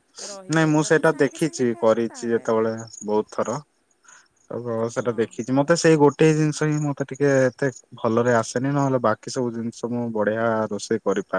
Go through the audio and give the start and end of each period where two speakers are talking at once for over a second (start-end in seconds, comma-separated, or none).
0.6-2.5